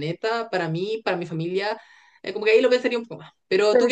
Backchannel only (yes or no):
yes